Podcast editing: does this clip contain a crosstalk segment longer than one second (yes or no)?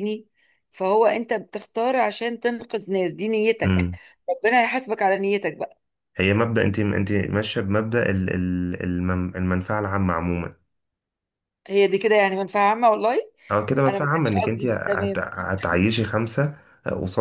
yes